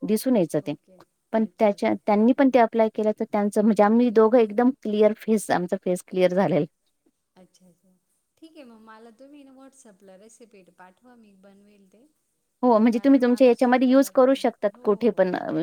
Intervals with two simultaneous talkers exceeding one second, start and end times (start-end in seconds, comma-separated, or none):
12.9-14.9